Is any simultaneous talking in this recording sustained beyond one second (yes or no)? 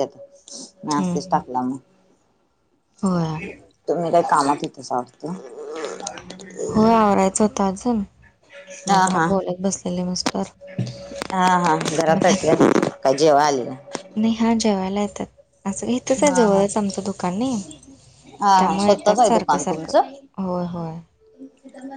yes